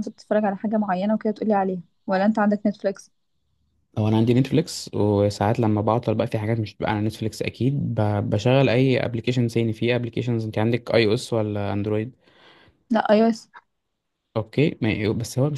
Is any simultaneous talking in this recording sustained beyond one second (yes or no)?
no